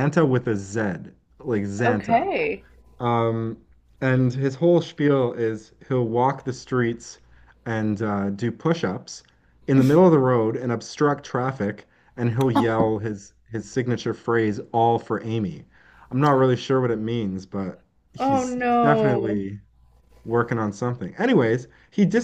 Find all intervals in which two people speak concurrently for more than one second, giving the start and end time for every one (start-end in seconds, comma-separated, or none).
18.2-19.4